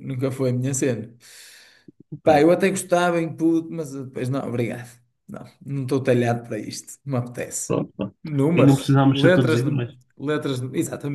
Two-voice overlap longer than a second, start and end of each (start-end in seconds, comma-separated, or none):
8.6-9.9